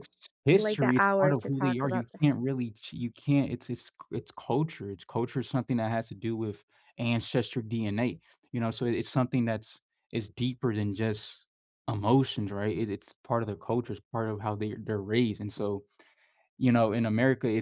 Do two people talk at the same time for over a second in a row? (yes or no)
yes